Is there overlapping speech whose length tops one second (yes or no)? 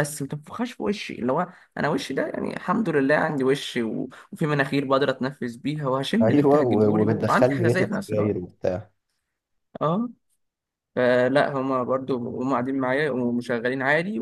yes